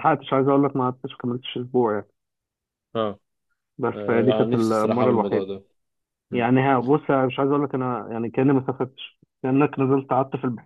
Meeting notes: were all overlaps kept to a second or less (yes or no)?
no